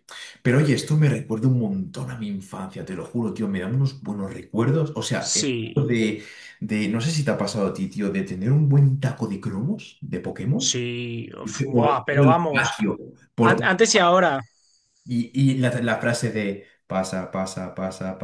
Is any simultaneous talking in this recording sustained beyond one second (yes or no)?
yes